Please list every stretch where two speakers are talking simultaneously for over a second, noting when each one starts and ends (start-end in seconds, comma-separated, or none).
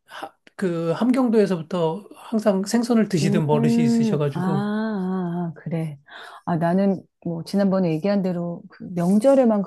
3.2-4.7